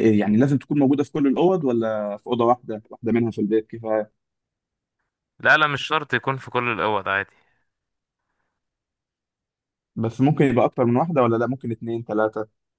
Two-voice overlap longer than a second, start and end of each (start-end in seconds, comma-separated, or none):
none